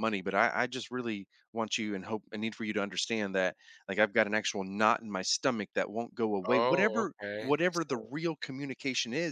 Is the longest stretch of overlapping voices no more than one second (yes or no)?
no